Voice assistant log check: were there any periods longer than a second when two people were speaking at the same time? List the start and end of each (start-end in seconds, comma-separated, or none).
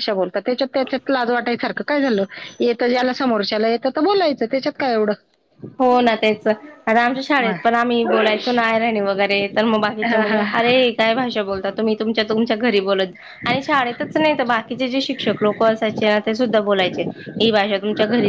none